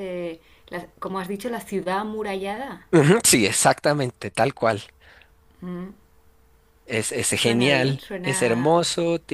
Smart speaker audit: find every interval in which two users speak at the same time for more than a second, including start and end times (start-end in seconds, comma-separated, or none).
7.3-8.8